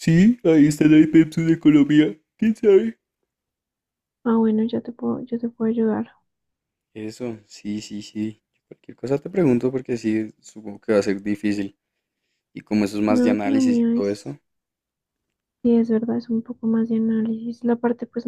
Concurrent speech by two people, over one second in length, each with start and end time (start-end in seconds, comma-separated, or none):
13.1-14.3